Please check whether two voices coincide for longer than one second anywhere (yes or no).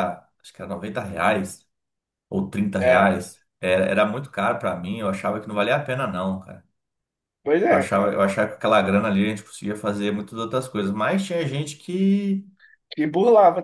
no